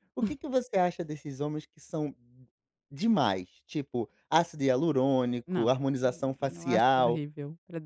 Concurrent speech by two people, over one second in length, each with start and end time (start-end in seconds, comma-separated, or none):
5.5-7.2